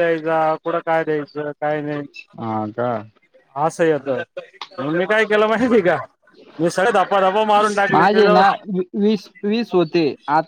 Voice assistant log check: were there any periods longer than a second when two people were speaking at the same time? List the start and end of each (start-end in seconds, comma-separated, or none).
none